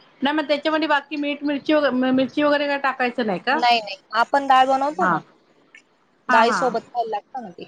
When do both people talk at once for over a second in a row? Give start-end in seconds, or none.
none